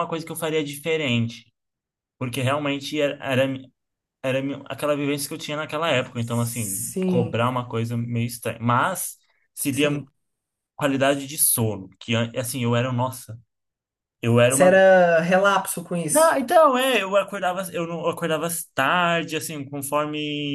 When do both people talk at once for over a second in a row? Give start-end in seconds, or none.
6.1-7.4